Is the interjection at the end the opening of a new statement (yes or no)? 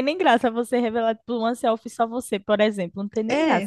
yes